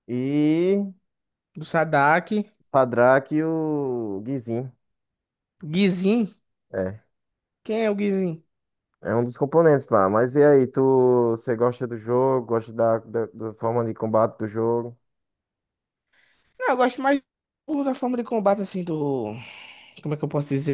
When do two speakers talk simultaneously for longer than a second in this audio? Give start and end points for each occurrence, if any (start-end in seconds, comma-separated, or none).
none